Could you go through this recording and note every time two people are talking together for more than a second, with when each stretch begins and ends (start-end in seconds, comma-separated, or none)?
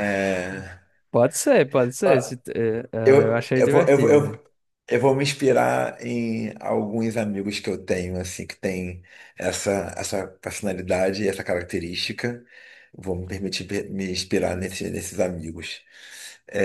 3.0-4.4